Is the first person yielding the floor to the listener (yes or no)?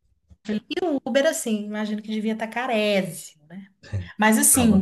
no